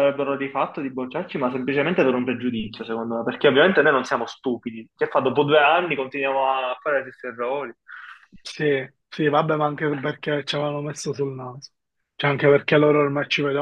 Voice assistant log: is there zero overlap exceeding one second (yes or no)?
yes